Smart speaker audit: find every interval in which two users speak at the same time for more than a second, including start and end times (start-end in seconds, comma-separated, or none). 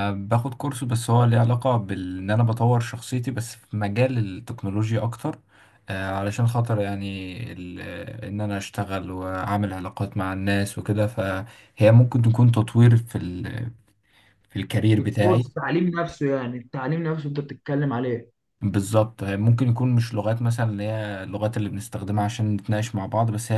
none